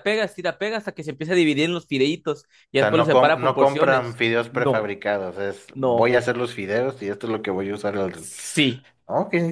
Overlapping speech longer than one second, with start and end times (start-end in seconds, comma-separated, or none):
2.8-4.9